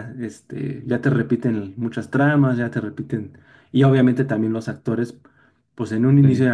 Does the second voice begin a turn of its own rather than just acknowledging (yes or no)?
no